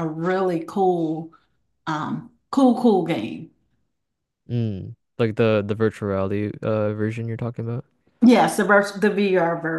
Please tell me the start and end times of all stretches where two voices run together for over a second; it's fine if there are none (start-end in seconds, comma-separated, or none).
none